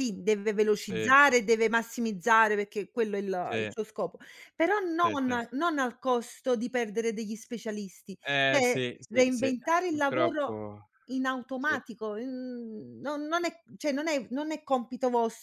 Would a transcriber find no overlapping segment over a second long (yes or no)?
no